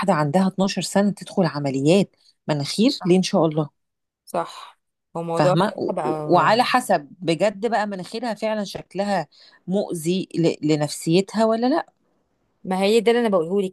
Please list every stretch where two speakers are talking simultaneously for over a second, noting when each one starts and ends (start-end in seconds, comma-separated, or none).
5.3-6.5